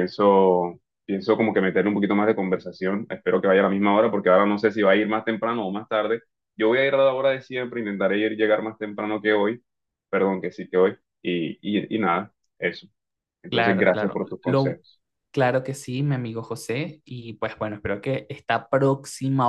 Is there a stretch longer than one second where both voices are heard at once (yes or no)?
yes